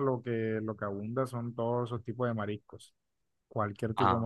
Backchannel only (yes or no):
yes